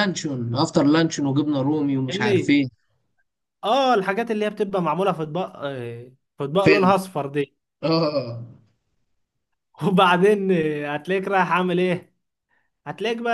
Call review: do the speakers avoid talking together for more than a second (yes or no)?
yes